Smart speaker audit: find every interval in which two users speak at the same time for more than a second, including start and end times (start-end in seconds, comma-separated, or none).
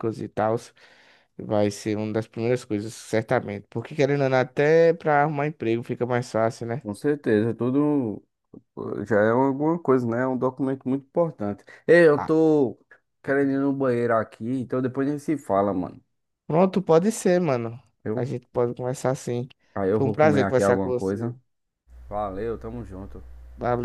19.9-21.3